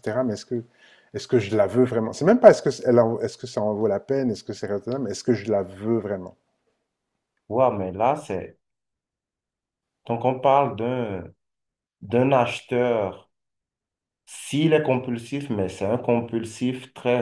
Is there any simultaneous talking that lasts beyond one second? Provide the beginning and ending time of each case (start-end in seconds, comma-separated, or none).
none